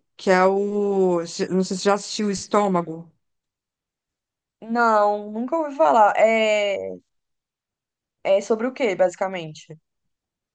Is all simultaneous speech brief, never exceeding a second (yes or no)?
yes